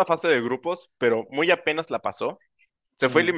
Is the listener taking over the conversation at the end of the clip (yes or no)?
no